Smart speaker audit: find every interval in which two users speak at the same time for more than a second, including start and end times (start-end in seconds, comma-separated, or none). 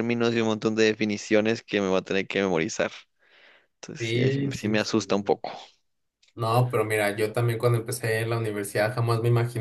4.0-5.3